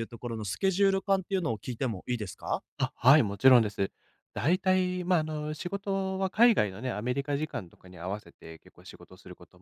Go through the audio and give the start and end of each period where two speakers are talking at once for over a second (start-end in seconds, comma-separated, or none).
none